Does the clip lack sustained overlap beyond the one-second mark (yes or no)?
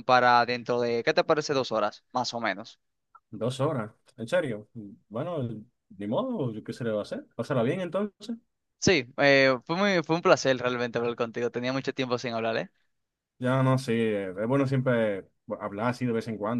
yes